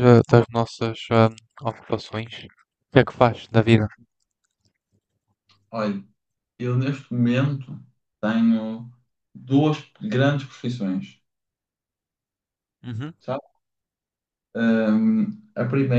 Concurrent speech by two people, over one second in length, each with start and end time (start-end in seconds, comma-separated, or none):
none